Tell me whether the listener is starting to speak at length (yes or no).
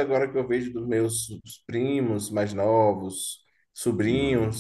no